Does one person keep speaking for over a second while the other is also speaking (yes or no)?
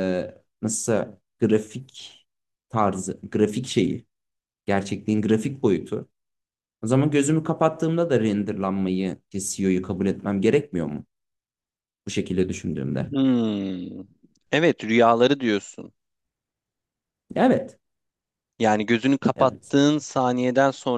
no